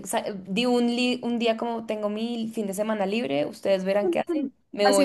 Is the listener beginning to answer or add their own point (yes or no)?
yes